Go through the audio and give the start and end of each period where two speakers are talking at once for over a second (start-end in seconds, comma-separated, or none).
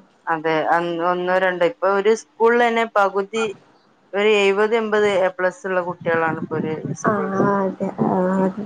none